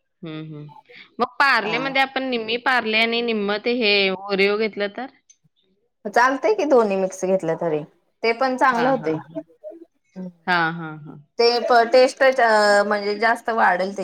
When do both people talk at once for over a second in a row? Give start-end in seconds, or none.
none